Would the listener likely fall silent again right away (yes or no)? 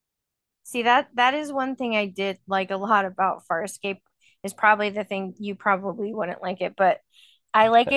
yes